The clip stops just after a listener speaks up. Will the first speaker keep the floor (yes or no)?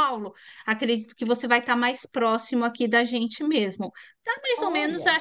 yes